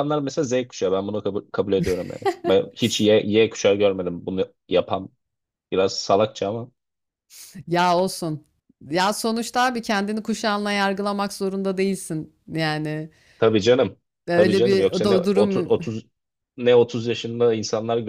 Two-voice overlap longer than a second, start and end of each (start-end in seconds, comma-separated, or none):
14.3-15.7